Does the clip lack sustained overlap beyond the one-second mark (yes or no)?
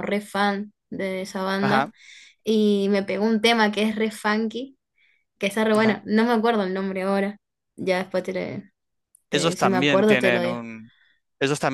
no